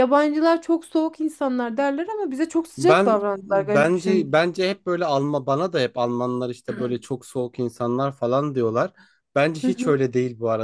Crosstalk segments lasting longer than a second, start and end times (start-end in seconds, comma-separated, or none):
2.8-4.4